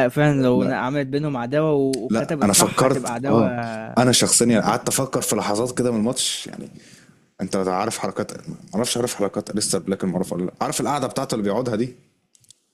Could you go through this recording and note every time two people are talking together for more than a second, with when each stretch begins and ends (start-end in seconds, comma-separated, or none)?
2.1-3.4